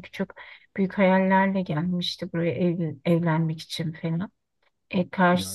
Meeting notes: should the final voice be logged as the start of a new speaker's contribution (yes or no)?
yes